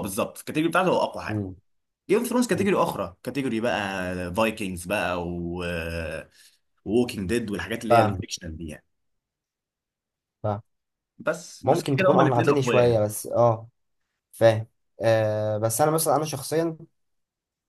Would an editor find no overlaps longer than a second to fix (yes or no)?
no